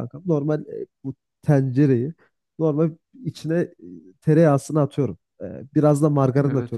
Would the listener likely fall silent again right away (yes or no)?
yes